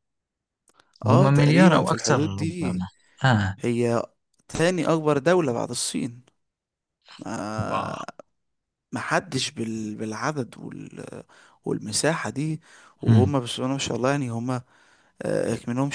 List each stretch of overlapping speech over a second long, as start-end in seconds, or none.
1.1-2.8